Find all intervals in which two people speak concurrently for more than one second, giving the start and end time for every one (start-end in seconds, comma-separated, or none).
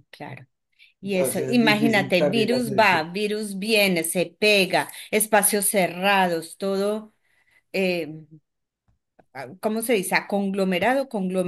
1.0-3.0